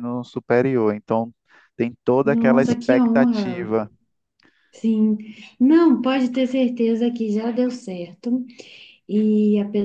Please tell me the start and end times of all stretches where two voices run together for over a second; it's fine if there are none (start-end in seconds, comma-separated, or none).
2.2-3.7